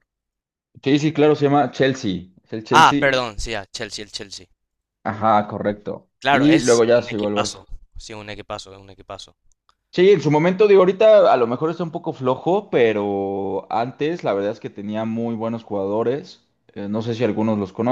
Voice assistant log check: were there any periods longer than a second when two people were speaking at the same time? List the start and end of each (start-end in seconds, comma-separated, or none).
6.2-7.6